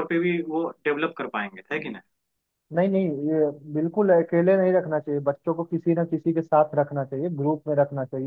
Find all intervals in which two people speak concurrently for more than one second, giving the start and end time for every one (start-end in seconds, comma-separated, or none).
none